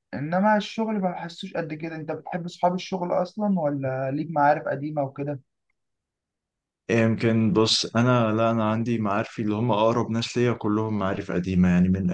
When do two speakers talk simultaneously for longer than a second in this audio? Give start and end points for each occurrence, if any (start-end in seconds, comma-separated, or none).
none